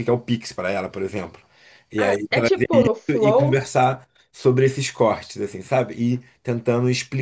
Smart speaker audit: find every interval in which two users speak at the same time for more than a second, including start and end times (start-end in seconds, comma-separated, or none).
2.0-3.6